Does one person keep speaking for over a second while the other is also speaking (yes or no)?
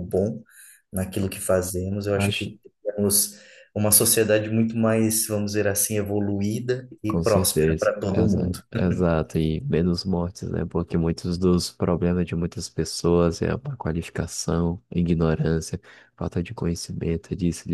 yes